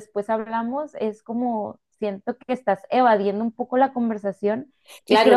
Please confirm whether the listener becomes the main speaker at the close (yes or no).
yes